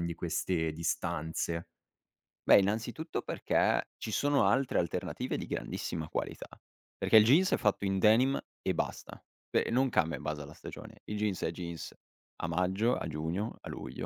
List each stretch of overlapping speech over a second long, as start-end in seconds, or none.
none